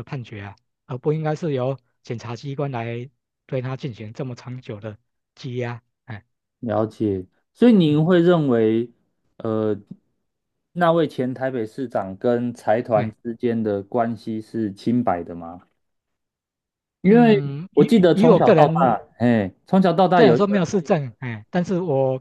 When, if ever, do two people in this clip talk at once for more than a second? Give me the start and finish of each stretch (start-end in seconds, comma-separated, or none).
17.1-19.0